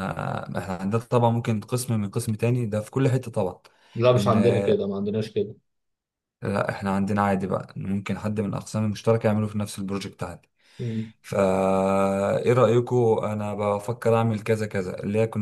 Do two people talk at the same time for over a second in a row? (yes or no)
no